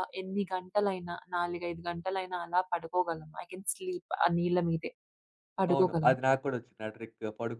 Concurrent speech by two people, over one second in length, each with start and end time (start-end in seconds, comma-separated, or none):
none